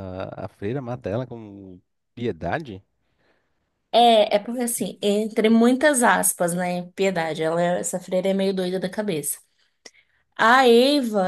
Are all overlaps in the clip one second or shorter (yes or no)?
yes